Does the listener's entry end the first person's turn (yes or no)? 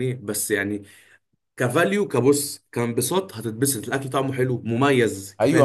yes